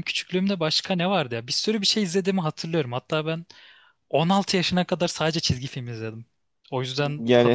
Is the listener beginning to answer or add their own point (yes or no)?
yes